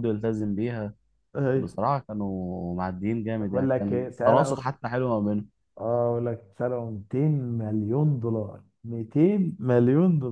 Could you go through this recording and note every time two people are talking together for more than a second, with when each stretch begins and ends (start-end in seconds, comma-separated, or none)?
3.4-4.7